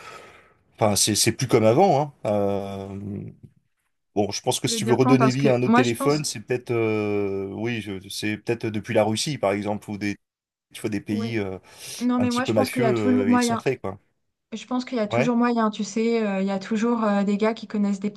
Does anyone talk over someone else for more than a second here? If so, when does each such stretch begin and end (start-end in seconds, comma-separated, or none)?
4.6-6.2, 12.2-13.6